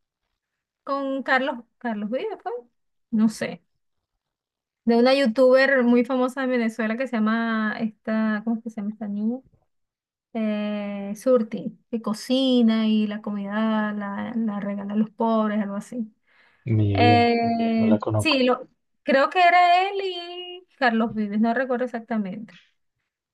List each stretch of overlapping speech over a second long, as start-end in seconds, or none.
16.9-18.4